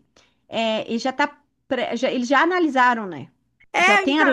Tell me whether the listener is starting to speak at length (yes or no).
yes